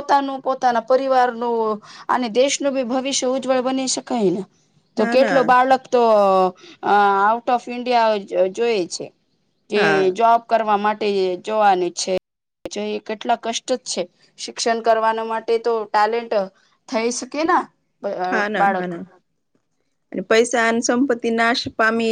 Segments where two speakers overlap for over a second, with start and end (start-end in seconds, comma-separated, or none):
none